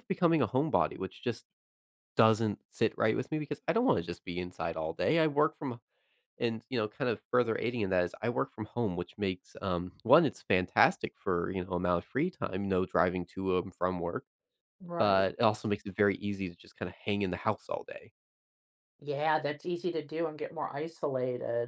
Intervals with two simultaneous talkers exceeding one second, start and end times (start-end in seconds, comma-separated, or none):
none